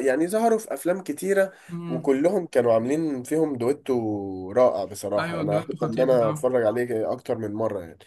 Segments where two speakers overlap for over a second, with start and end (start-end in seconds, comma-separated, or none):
5.2-6.5